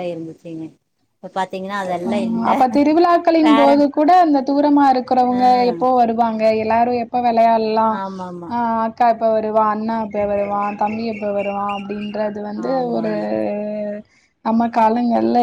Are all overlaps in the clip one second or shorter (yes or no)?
yes